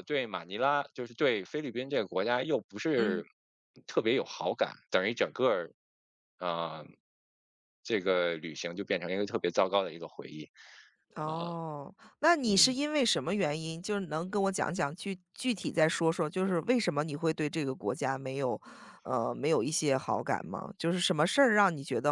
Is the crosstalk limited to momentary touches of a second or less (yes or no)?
yes